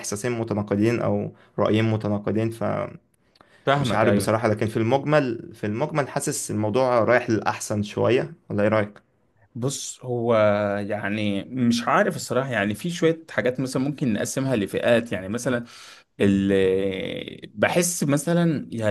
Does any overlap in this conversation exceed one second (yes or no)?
no